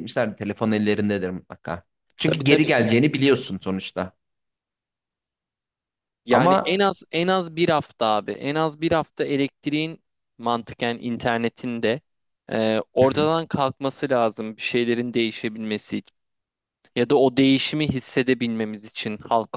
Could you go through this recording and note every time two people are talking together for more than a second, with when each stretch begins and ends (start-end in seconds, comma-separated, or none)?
2.2-3.4